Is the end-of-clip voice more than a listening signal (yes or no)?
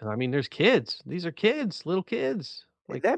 yes